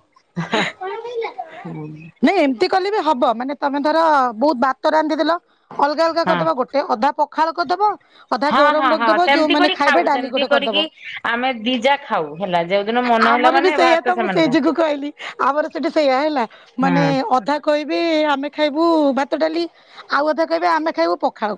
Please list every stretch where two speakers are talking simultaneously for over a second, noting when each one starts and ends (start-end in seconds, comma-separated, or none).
8.5-10.8